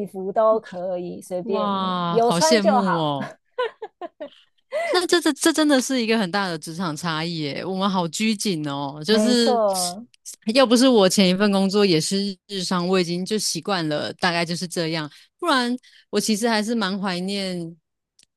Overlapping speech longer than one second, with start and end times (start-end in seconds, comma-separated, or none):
1.4-3.0